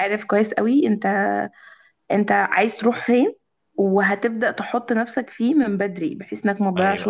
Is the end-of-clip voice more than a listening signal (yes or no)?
no